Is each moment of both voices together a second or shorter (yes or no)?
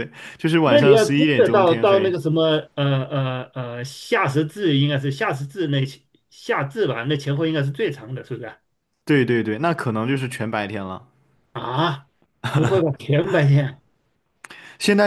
no